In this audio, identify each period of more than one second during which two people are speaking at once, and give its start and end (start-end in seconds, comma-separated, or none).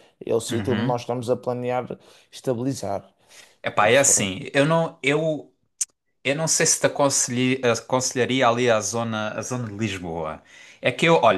none